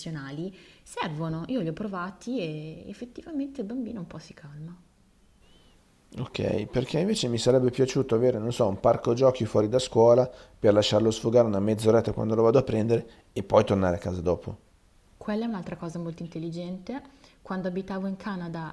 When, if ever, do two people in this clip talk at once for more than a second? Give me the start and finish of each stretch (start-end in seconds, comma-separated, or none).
none